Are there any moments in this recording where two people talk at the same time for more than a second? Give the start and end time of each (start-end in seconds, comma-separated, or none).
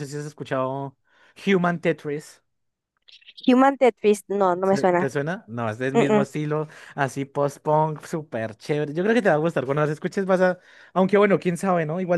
none